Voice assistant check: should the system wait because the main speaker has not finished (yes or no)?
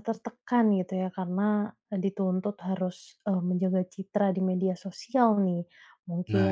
yes